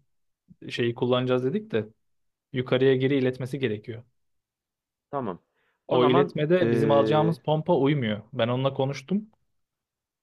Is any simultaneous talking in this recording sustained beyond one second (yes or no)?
yes